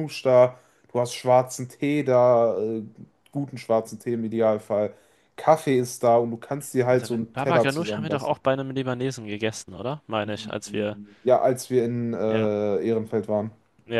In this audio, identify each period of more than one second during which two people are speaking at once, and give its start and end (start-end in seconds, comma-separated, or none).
6.9-8.4